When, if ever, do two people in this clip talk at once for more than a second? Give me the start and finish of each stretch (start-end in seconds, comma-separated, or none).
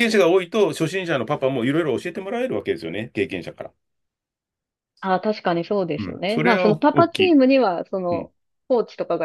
6.0-7.3